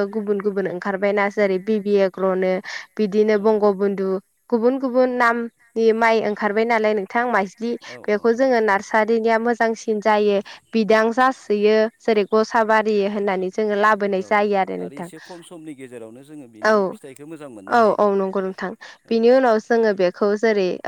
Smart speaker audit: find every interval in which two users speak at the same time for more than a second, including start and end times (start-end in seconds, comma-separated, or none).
none